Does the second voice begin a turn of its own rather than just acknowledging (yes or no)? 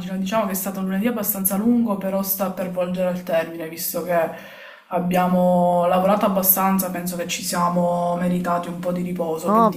yes